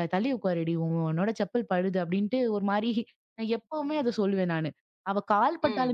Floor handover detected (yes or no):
no